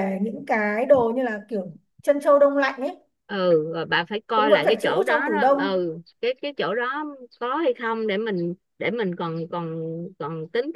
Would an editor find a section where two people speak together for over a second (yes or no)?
yes